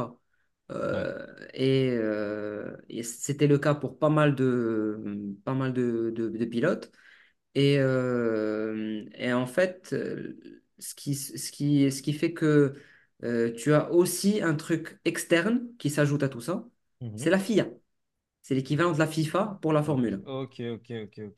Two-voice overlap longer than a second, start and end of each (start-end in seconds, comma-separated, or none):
none